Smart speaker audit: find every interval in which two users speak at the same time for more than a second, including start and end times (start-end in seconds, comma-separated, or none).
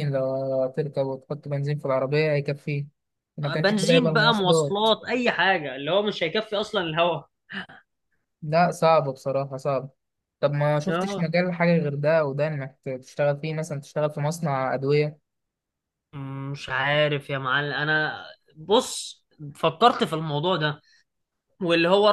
3.5-4.9